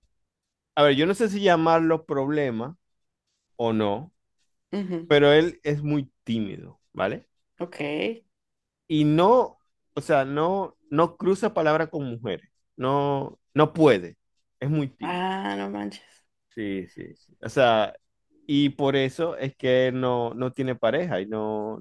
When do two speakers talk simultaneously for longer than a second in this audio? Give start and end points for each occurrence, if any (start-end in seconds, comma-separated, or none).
none